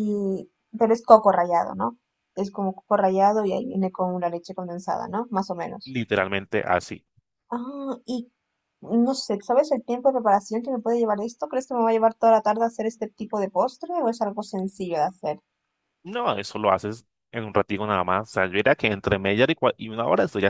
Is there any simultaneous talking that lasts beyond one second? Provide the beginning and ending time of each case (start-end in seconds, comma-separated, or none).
none